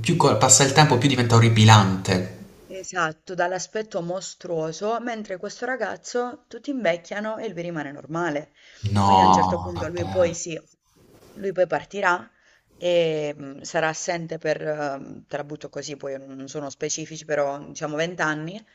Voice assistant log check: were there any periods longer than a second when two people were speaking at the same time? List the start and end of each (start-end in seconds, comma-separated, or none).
9.0-10.3